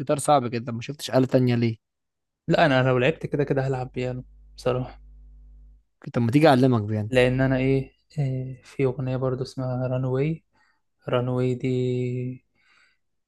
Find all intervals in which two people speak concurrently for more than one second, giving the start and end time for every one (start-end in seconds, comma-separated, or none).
none